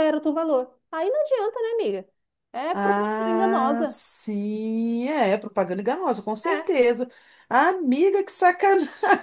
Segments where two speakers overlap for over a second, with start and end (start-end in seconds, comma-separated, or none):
2.7-4.0